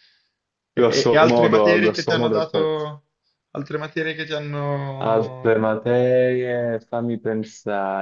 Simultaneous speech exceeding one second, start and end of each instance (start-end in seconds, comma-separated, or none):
0.8-2.7